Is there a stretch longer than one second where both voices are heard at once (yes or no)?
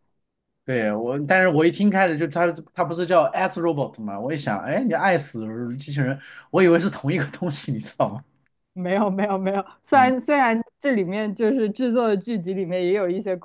no